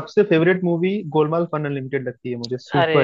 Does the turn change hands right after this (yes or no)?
yes